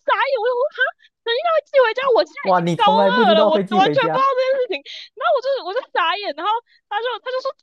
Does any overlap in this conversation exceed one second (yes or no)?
yes